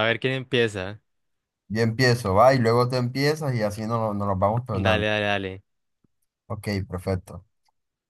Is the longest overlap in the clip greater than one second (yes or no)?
no